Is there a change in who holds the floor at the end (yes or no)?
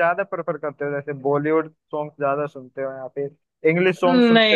yes